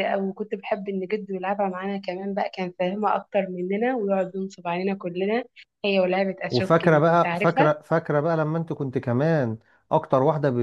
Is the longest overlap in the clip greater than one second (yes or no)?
yes